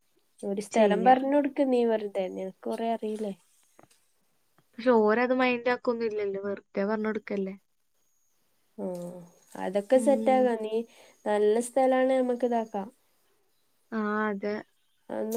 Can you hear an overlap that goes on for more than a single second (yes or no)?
no